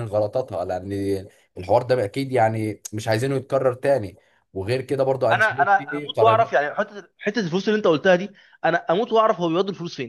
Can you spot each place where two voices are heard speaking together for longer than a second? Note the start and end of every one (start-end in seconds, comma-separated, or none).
5.3-6.5